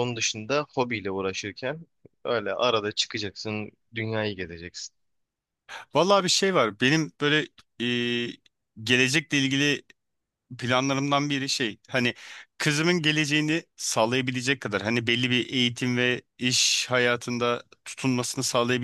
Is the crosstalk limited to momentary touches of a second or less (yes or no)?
yes